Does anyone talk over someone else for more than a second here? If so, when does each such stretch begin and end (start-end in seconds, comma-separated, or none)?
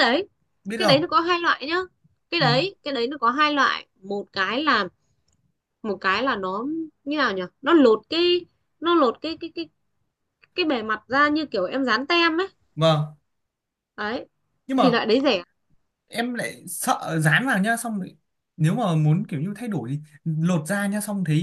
none